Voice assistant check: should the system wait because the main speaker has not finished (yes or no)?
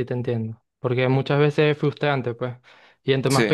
yes